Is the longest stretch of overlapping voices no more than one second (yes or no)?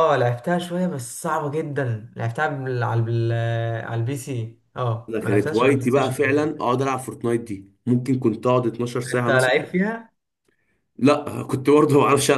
no